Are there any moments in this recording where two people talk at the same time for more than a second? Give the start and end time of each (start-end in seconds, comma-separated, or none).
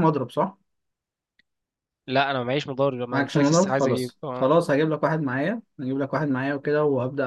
3.1-4.5